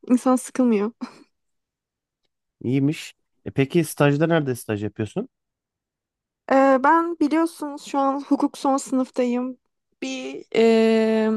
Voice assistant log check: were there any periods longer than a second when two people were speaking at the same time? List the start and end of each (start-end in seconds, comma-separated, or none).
none